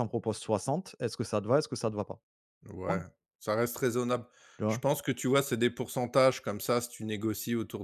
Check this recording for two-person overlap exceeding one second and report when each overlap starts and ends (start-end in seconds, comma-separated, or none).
none